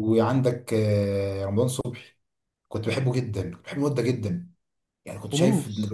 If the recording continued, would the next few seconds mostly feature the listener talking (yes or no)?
no